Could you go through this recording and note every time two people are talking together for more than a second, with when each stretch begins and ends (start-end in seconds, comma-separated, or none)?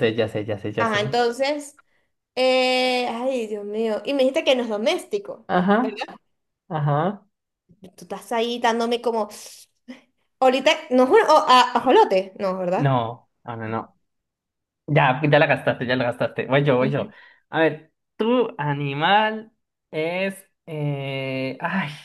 none